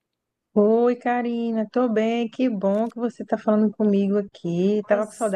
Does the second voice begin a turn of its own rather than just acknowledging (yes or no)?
yes